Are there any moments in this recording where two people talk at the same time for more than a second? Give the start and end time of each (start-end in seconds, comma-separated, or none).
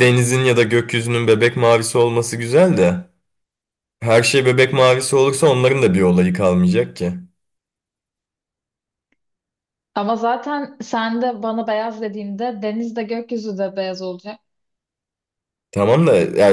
none